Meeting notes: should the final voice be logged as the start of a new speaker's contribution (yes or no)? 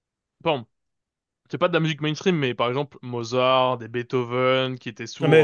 yes